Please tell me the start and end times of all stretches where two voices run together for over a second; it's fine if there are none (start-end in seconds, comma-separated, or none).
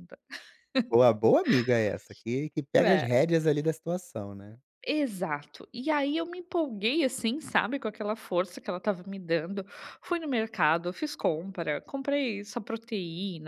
none